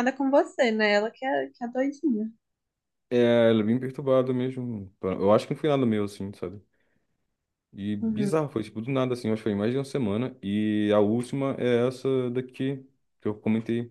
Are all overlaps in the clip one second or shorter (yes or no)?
yes